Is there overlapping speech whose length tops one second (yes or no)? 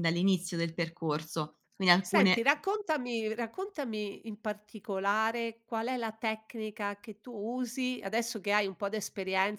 no